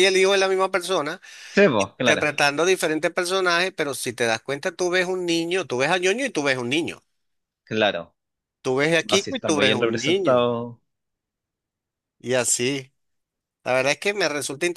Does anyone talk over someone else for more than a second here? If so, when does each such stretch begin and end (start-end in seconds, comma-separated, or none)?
9.1-10.5